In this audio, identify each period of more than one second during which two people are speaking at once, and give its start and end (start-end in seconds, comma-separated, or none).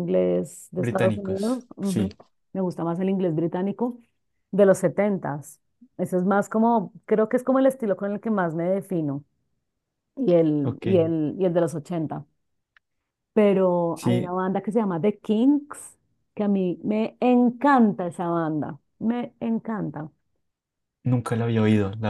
0.8-2.1